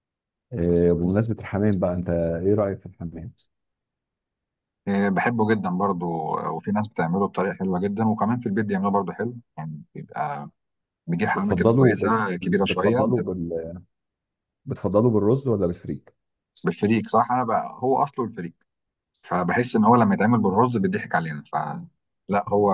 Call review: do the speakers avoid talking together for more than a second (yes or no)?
no